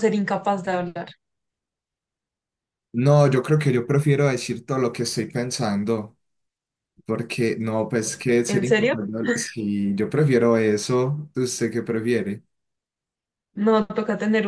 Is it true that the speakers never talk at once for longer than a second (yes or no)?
yes